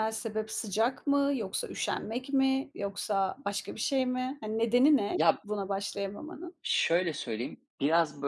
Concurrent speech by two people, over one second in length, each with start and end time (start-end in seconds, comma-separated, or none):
none